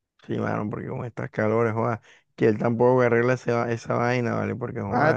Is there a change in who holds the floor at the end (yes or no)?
yes